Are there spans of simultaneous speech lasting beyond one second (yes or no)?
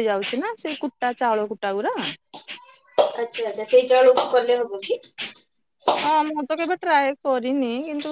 no